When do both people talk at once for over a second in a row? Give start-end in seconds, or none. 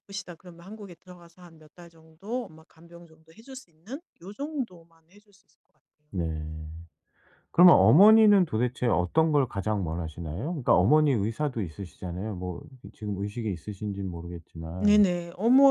none